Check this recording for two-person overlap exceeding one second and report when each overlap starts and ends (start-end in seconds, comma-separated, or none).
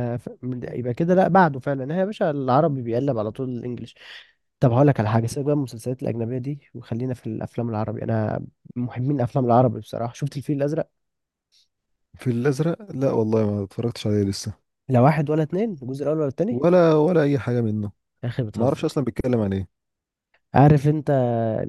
none